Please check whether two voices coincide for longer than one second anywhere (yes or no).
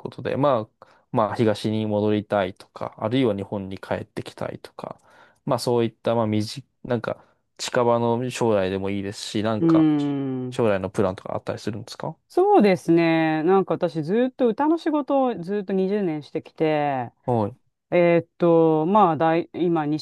no